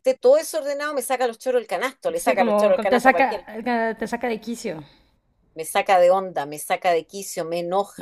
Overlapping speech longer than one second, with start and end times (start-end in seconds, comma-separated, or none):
2.1-3.4